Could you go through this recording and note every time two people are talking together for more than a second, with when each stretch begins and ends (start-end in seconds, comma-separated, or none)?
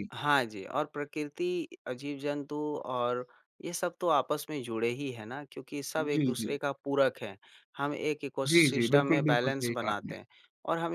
8.5-10.1